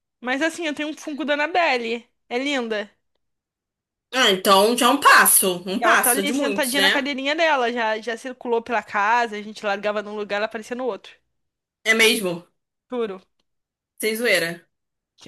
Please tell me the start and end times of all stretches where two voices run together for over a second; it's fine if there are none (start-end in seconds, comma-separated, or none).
5.8-7.1